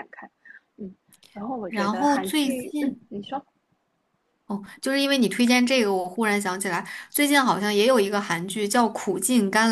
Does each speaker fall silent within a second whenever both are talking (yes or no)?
no